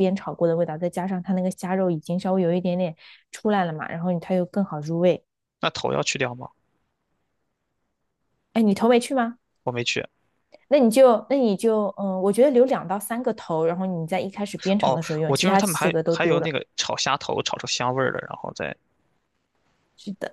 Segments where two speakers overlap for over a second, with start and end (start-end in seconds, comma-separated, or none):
14.8-16.5